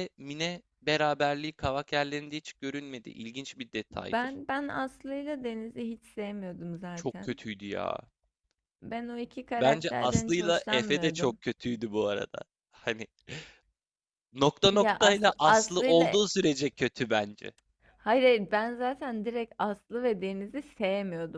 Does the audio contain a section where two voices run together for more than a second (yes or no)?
yes